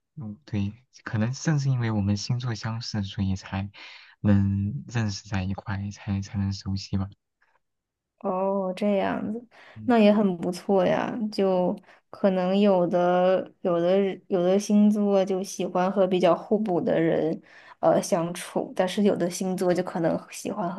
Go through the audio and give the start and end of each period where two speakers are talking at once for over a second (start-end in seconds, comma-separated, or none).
none